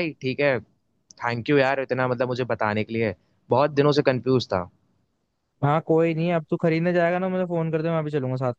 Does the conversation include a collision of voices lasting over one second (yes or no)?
no